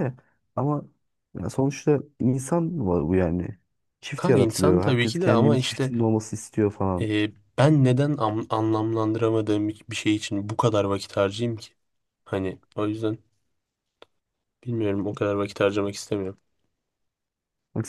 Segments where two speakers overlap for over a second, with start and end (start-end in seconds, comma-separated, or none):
4.2-5.9